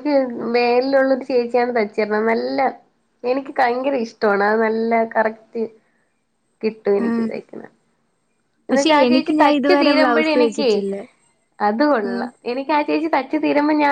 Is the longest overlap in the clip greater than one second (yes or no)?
yes